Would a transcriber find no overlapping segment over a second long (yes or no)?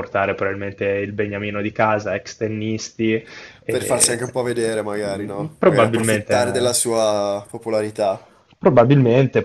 no